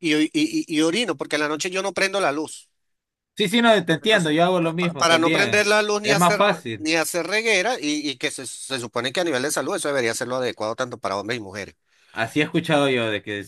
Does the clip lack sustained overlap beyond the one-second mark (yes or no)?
no